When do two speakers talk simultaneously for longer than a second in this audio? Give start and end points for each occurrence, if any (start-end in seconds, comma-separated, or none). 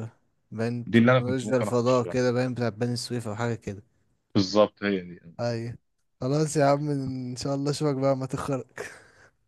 0.8-2.2